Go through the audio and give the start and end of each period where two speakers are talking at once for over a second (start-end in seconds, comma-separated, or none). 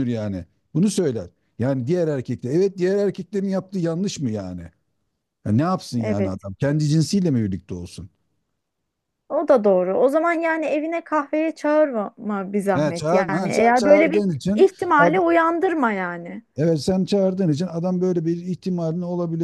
12.7-15.2